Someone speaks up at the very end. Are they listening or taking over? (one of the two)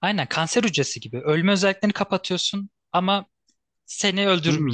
taking over